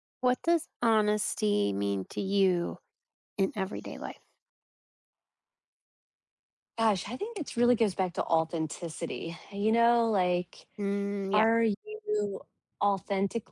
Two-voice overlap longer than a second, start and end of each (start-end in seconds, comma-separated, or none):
none